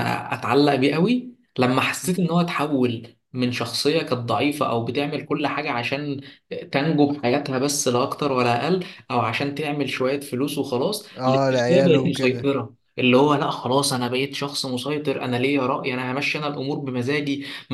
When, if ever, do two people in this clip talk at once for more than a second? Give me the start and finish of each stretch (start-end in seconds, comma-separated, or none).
11.2-12.5